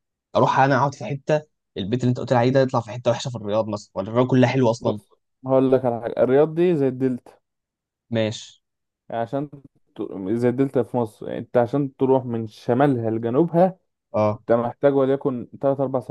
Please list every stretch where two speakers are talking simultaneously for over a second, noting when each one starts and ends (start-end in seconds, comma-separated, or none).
none